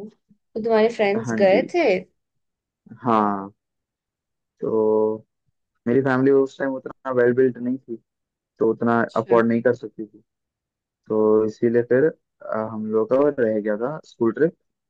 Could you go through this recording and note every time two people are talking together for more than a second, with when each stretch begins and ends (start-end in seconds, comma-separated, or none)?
none